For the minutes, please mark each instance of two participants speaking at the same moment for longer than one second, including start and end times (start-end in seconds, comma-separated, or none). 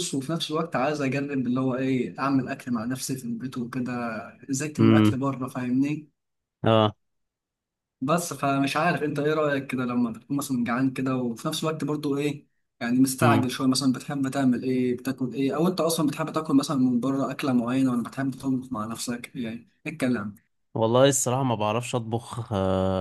none